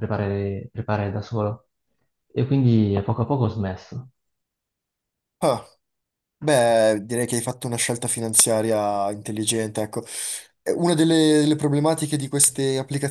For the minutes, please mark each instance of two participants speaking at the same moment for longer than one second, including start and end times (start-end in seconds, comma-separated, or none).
none